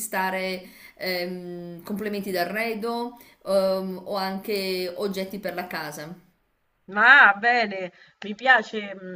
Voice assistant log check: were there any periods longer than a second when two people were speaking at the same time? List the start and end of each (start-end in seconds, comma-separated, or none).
none